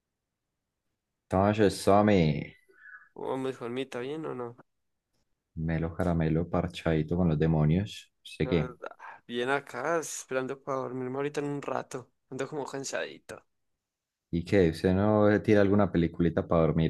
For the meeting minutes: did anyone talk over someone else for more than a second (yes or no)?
no